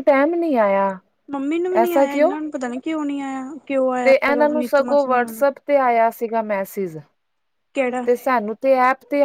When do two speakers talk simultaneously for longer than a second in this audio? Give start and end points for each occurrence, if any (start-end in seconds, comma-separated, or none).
4.0-5.5